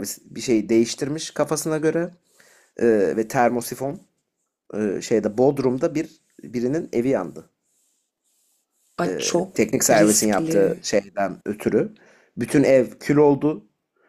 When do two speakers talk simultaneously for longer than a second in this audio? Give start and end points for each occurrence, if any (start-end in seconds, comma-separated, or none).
9.1-10.8